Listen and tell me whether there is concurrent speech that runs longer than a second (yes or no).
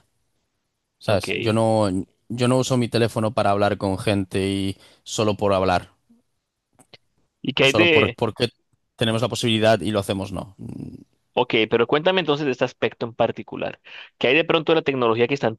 no